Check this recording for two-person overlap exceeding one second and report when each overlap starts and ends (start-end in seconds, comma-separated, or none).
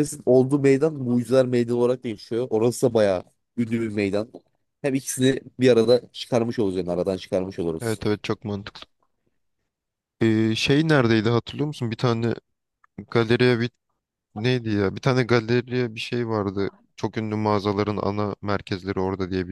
none